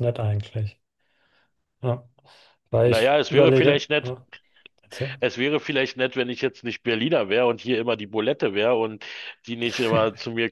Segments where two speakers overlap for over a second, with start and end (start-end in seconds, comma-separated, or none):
2.9-4.2